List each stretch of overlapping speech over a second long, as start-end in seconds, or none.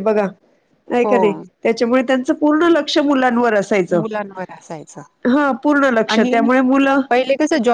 none